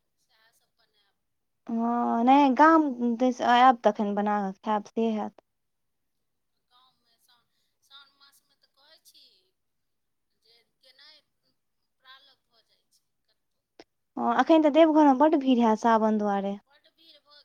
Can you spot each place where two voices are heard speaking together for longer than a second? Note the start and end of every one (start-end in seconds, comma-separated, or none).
none